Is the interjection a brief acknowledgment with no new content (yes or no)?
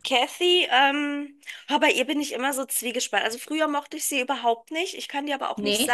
yes